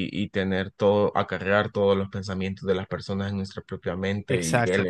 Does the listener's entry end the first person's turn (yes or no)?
no